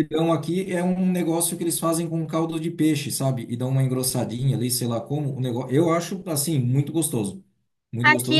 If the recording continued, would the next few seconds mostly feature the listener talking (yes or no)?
yes